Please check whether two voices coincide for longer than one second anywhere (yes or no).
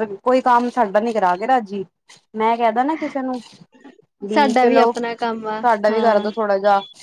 yes